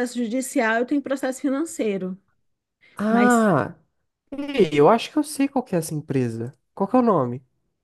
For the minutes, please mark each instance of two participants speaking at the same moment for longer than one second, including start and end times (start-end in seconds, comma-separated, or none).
none